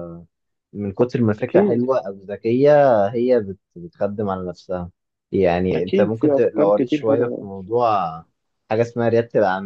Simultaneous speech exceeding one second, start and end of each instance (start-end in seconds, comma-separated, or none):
5.7-7.5